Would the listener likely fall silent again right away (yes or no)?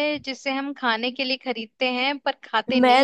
no